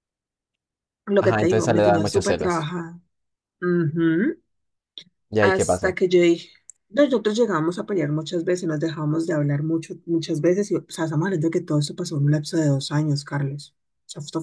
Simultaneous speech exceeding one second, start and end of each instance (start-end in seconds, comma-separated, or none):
1.2-2.7